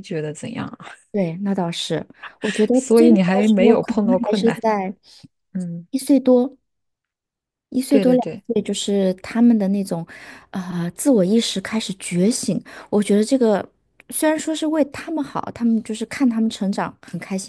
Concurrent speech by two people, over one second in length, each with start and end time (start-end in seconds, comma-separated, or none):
2.7-4.6